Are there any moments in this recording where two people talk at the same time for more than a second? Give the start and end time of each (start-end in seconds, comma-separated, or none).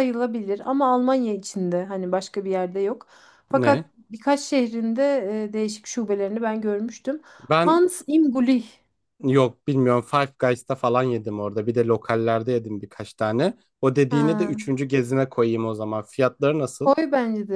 none